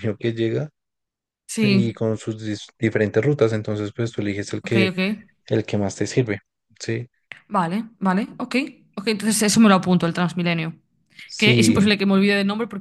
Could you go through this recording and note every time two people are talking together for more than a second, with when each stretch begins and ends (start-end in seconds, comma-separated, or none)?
none